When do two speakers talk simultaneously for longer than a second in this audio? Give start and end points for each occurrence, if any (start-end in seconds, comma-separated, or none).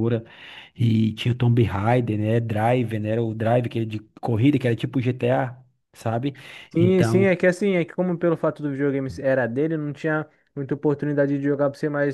none